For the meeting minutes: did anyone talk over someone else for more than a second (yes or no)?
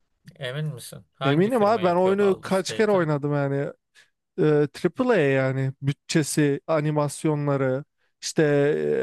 yes